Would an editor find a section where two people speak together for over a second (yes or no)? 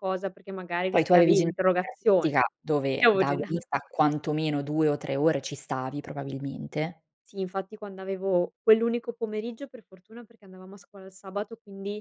yes